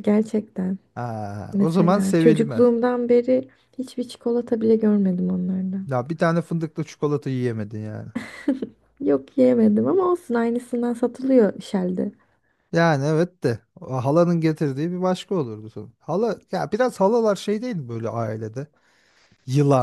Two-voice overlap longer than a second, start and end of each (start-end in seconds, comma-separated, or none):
1.5-2.7